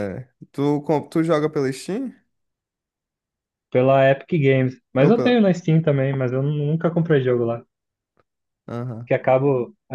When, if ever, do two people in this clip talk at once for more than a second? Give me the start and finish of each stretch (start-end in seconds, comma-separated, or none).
none